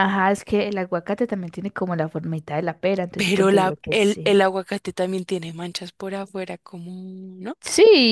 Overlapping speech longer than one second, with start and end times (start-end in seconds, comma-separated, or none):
3.2-4.4